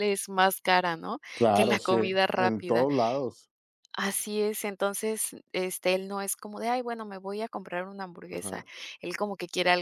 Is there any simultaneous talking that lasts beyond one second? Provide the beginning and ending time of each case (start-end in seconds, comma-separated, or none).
1.3-2.9